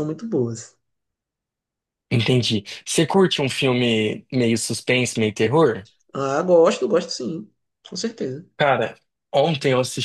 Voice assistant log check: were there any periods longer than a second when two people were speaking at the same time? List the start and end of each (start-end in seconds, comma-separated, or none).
none